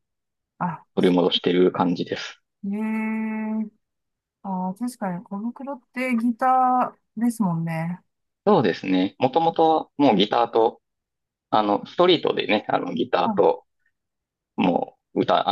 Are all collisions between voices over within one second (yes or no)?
yes